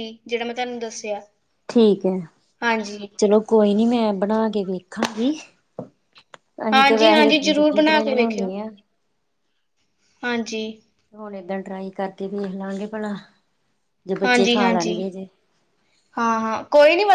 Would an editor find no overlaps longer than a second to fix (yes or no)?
no